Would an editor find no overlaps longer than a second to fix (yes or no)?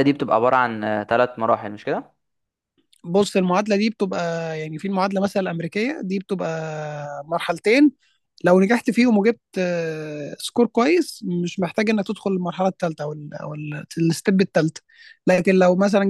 yes